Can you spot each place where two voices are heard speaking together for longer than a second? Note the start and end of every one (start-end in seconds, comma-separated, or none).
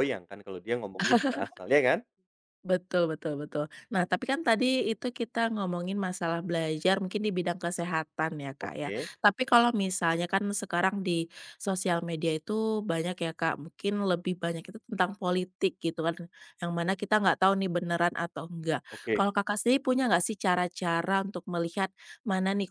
none